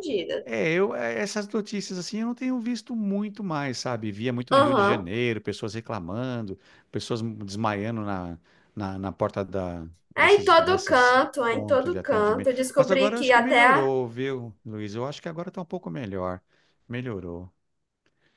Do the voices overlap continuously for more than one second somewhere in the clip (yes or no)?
yes